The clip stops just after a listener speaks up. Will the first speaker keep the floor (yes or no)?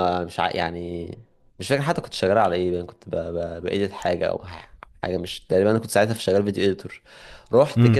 yes